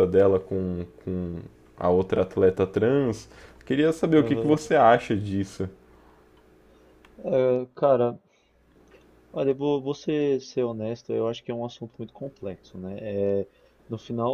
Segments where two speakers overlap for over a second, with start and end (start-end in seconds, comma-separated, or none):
none